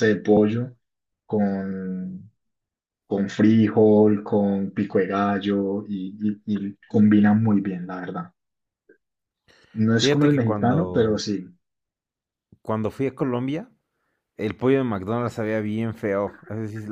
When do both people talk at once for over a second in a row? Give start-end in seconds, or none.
9.9-11.2